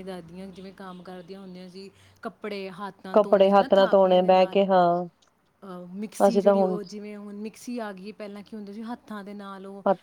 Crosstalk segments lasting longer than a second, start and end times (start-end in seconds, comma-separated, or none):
3.1-4.7